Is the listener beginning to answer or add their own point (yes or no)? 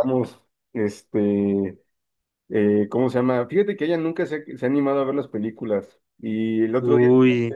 no